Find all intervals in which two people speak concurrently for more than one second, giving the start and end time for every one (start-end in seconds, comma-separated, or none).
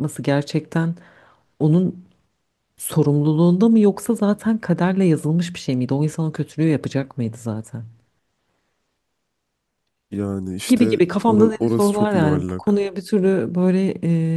10.7-12.9